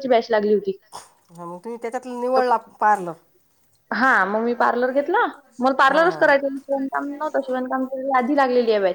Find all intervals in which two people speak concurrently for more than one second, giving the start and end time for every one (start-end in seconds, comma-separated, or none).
none